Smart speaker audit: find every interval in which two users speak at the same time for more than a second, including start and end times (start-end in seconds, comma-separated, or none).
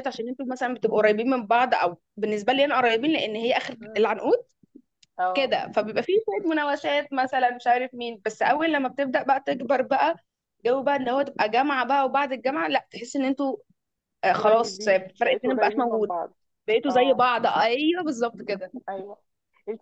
14.3-16.1